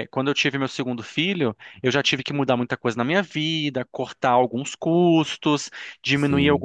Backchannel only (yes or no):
yes